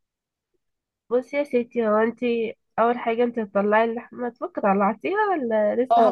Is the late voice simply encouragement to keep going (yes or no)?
no